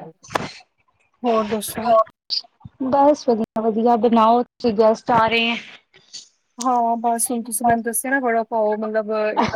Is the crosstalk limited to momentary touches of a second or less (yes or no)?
yes